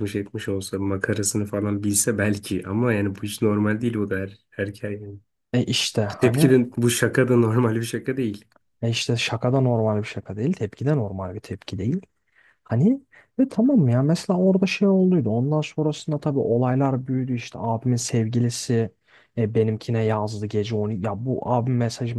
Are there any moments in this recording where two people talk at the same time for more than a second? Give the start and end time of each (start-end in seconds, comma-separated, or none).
none